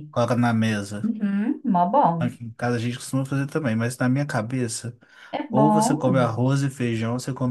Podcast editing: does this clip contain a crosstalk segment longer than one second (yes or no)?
no